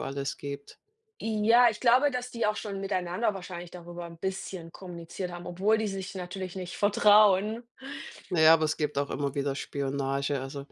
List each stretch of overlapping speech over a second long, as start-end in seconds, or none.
none